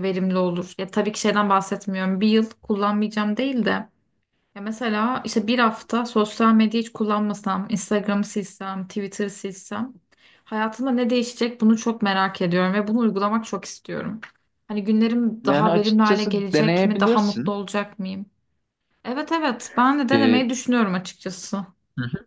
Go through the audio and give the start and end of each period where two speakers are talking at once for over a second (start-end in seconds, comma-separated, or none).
15.4-17.5